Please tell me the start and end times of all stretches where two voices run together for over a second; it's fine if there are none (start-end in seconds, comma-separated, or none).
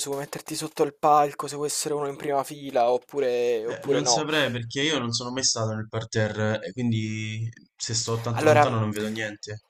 none